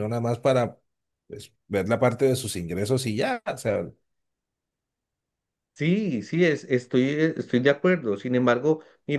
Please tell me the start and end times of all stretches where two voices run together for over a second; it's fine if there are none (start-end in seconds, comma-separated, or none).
none